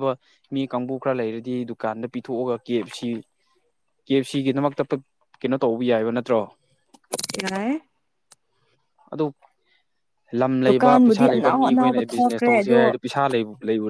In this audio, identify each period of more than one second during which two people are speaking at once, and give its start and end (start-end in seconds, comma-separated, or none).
10.7-12.8